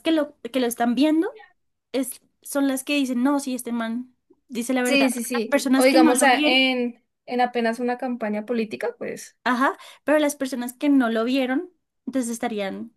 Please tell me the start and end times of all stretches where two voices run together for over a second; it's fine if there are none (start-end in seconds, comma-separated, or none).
4.8-6.6